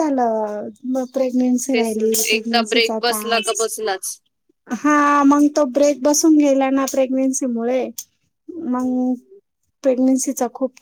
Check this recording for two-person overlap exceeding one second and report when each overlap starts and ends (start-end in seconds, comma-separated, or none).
1.7-3.7